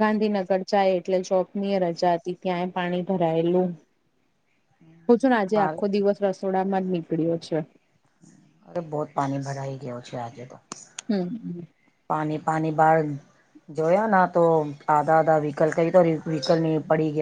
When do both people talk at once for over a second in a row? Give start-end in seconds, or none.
none